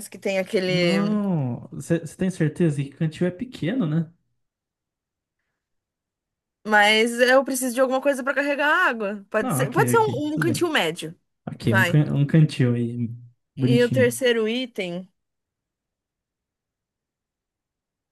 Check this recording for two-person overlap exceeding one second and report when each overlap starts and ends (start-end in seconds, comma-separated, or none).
9.4-10.7